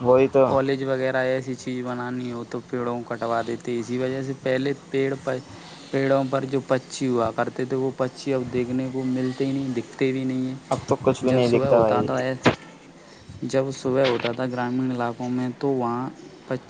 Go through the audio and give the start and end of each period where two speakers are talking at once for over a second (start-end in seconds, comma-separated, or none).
10.7-12.1